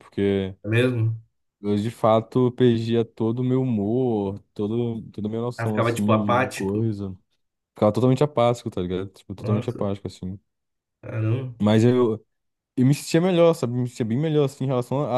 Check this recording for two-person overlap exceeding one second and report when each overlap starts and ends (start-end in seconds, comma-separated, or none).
5.6-6.8